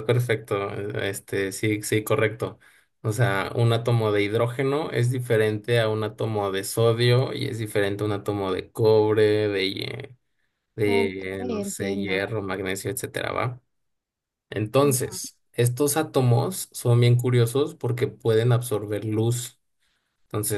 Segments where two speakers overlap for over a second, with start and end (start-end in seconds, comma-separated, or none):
10.8-12.2